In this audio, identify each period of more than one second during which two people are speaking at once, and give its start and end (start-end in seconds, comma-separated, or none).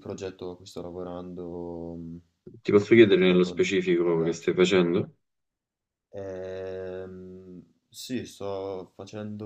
3.1-4.5